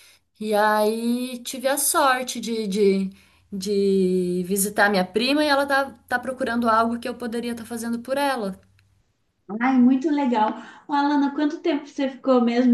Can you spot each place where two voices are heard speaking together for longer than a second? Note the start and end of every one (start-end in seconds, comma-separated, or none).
none